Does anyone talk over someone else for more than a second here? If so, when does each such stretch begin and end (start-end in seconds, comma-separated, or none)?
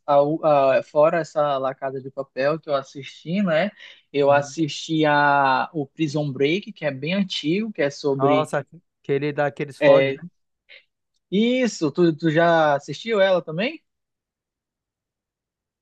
none